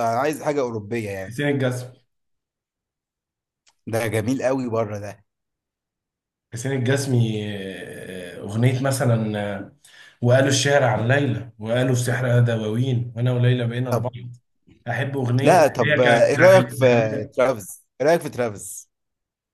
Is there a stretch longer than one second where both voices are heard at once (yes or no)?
yes